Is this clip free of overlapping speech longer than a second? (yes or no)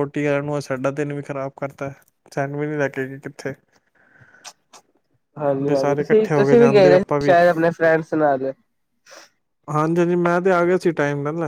no